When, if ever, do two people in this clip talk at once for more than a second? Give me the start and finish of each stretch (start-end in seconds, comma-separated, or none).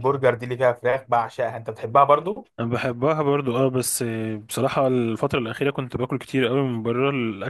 none